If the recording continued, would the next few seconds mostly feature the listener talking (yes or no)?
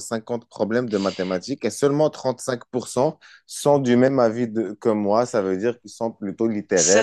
yes